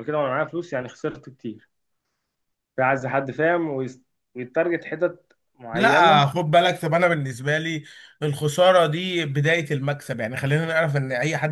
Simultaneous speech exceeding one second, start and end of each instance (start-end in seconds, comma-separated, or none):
none